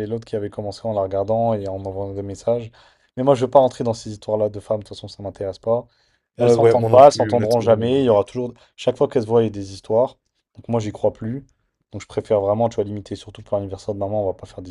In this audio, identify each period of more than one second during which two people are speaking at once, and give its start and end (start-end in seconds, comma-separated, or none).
6.4-7.9